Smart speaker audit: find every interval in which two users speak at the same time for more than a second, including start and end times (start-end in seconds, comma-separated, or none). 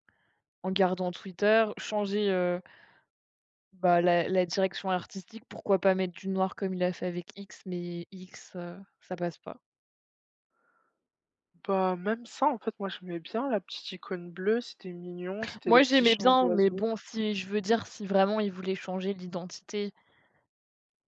15.7-16.9